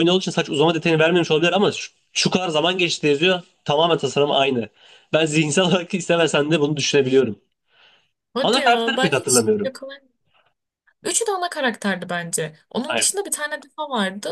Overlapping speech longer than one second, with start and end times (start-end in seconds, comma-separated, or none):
8.4-9.7